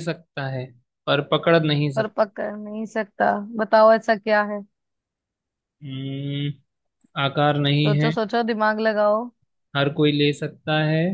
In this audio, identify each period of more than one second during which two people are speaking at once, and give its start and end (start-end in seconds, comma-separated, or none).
none